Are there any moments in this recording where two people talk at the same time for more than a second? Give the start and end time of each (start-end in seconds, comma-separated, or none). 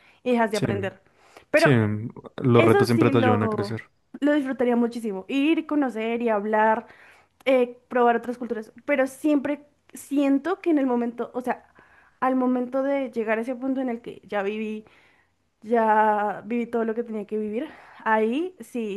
2.5-3.7